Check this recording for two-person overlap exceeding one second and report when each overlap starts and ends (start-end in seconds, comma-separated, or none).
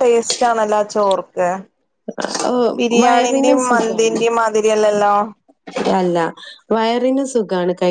3.0-4.2